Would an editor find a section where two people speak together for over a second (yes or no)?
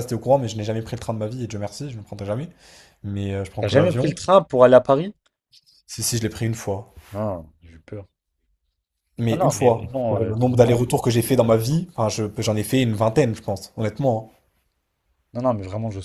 yes